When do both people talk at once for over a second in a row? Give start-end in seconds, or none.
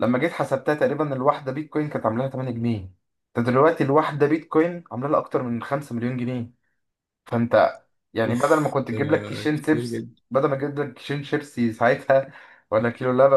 8.3-10.2